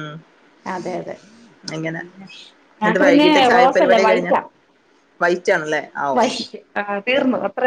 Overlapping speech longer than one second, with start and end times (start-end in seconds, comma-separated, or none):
2.8-4.3